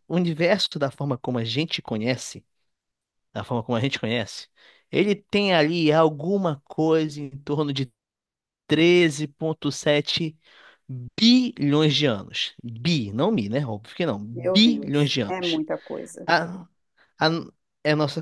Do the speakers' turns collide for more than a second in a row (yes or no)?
yes